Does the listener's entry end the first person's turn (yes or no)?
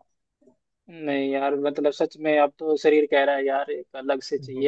yes